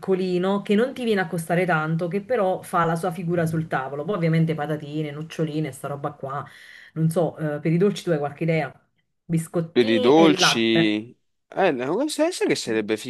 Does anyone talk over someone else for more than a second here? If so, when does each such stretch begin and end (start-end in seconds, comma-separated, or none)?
9.7-10.9